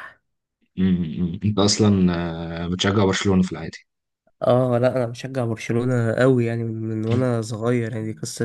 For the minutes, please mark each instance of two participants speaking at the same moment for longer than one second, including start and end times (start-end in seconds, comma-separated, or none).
none